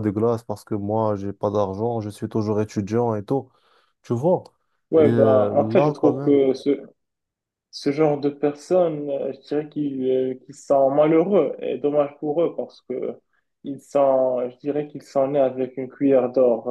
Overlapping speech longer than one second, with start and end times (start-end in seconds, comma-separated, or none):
5.0-6.4